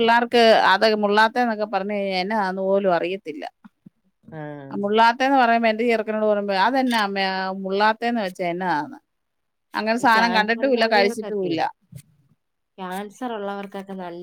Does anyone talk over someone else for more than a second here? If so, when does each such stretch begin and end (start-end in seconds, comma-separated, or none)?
10.0-11.5